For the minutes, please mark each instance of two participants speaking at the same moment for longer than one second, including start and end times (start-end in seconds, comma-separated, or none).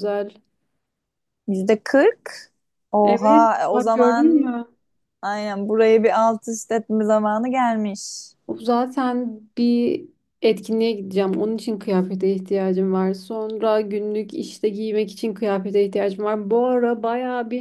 3.0-4.5